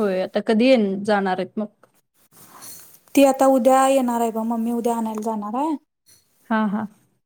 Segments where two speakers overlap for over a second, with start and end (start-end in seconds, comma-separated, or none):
none